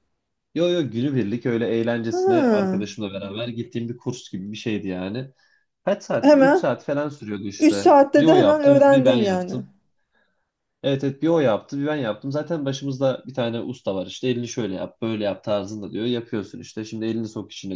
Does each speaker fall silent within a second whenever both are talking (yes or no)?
no